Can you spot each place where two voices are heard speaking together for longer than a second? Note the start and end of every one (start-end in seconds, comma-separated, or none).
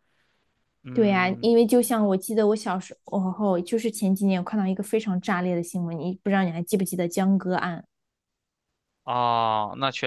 none